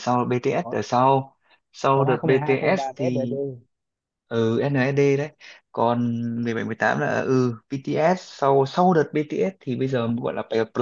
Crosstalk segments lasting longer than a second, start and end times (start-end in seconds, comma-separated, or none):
1.9-3.4